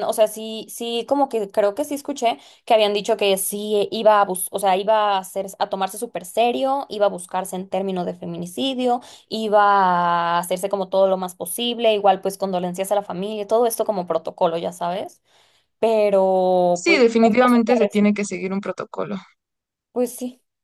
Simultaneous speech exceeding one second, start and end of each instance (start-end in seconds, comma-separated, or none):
16.7-18.0